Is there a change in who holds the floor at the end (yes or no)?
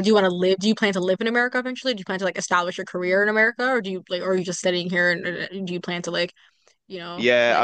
yes